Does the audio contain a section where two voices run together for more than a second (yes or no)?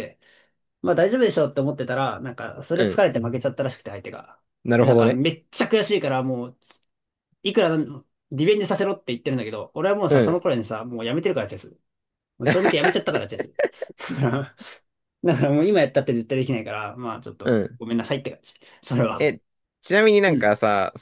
no